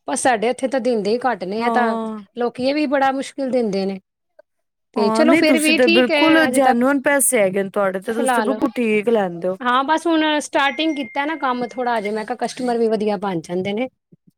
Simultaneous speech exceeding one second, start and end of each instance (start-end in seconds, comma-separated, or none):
5.0-6.9